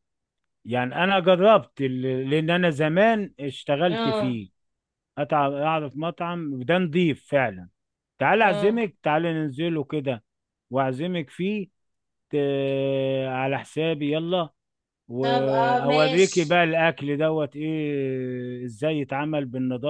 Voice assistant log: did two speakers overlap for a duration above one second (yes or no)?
yes